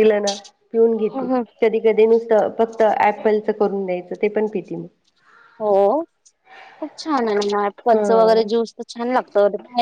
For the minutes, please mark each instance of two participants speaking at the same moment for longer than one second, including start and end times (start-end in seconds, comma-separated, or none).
none